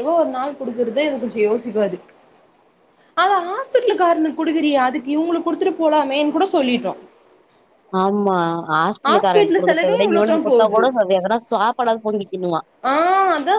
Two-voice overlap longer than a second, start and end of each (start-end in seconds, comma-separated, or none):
9.1-10.8